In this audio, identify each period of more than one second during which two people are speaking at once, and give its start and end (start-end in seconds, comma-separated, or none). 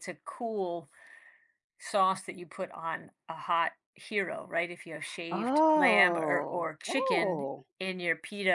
5.3-7.7